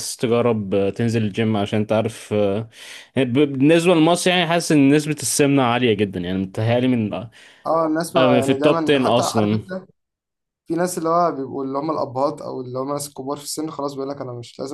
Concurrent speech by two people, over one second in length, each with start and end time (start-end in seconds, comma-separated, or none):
8.2-9.6